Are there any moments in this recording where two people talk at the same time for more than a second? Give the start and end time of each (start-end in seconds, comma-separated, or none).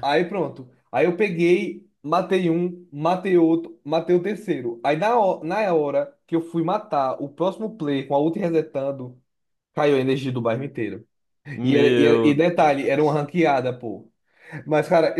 11.6-13.2